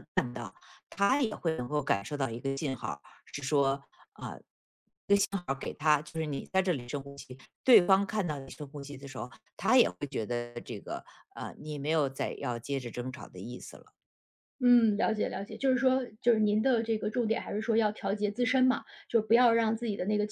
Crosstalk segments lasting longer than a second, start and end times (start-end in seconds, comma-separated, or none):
none